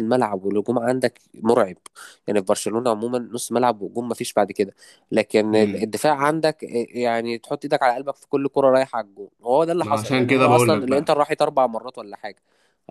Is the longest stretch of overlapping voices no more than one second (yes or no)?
no